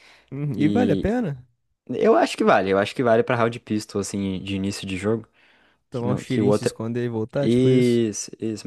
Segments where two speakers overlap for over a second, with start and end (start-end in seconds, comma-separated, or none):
5.9-8.0